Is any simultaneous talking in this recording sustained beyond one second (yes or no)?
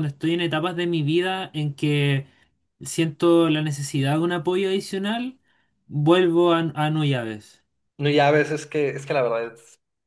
no